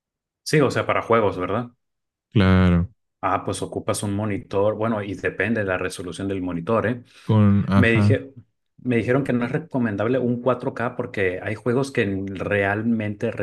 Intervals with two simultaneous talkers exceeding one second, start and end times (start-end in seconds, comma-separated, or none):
none